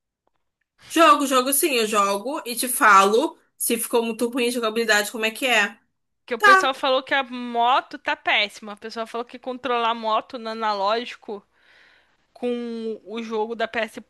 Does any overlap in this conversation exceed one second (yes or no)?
no